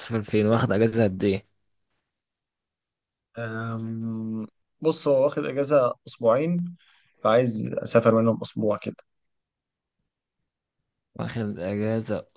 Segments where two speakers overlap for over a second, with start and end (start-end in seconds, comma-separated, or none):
none